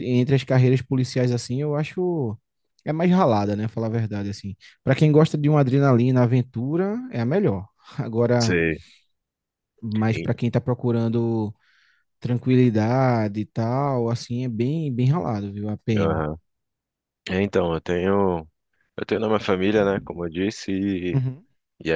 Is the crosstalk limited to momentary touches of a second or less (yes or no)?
yes